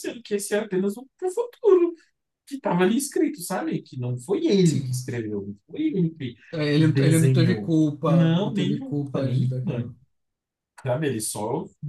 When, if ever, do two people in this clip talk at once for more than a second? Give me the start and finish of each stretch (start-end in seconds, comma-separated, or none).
6.8-9.9